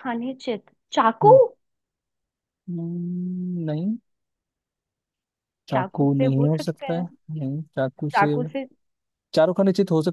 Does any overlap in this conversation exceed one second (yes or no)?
yes